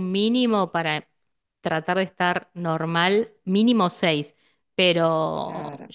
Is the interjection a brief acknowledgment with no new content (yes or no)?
yes